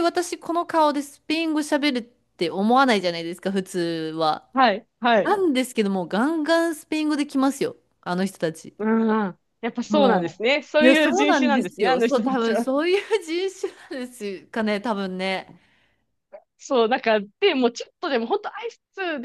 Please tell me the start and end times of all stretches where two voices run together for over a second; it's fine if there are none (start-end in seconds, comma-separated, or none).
9.9-12.7